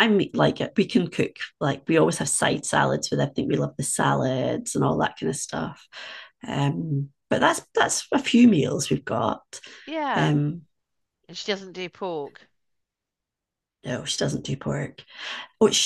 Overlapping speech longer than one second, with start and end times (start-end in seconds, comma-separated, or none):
none